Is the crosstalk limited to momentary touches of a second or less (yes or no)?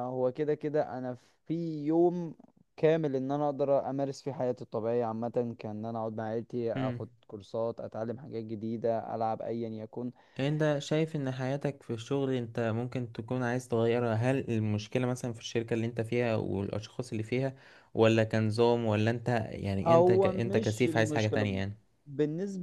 no